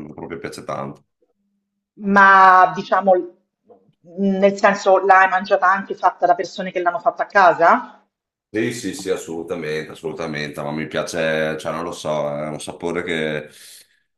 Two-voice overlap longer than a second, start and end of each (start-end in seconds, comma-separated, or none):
none